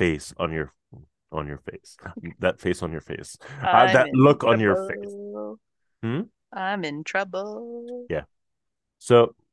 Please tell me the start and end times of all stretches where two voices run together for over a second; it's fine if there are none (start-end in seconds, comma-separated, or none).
3.6-5.2